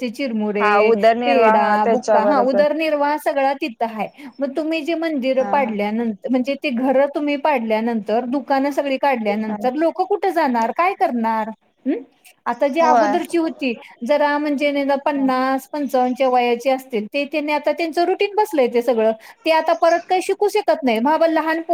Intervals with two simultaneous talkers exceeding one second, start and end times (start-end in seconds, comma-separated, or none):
0.6-2.6